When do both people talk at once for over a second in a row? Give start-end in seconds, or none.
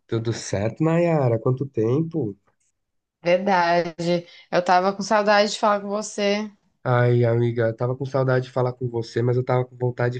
none